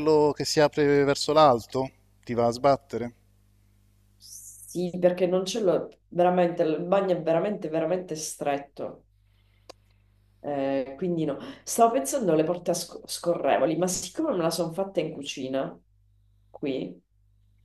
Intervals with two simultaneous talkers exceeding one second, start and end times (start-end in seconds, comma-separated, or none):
none